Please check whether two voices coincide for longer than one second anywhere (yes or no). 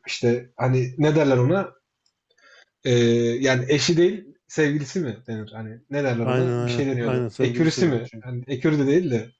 yes